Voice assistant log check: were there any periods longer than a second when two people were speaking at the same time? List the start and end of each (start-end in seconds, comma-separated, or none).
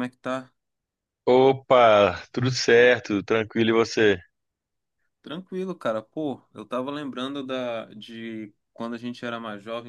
none